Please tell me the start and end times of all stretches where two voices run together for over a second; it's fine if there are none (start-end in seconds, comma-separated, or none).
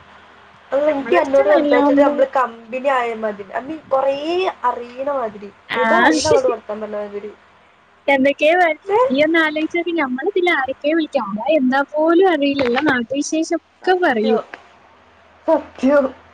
0.9-2.1